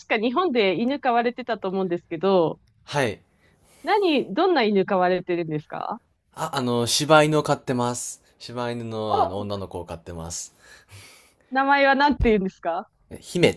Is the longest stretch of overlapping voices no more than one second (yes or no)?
yes